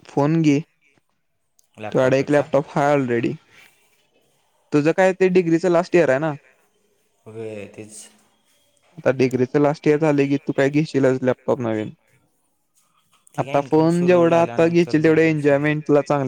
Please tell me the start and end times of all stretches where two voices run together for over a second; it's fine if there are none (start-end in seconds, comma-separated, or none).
13.4-15.7